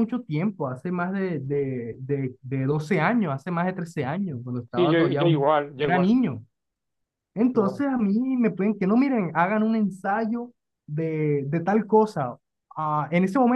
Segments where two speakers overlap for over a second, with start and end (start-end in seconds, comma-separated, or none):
4.8-6.1